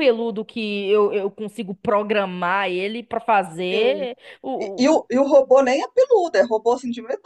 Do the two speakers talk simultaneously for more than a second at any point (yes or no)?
no